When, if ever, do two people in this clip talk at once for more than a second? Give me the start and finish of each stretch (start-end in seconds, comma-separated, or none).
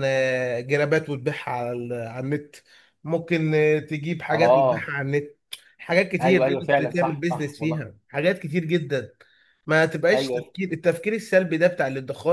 6.2-7.8